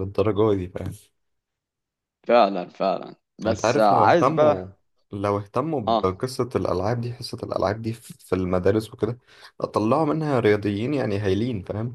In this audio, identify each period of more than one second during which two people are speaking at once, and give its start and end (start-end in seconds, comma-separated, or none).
3.5-4.7